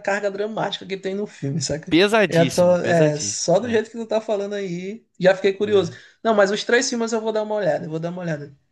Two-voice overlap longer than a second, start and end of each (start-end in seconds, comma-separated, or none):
1.9-3.8